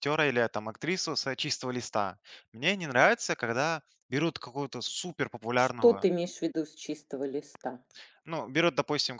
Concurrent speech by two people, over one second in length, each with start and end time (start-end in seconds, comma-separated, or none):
none